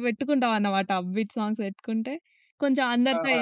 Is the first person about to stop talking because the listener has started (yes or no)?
no